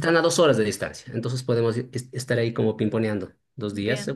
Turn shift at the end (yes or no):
no